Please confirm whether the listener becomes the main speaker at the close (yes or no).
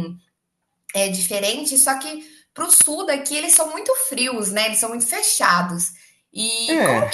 no